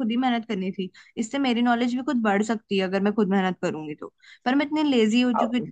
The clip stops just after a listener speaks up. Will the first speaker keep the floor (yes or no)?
yes